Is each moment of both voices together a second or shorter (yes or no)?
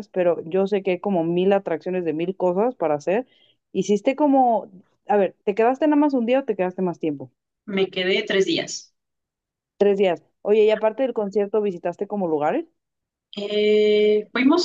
yes